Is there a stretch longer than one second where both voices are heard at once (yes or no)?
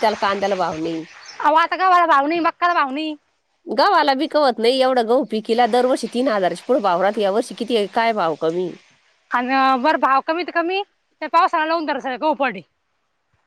no